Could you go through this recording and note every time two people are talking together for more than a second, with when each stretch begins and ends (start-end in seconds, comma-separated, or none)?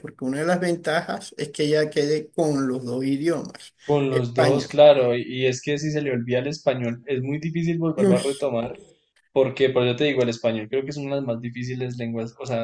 none